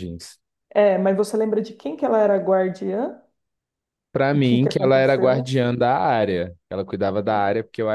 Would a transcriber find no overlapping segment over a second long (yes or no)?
no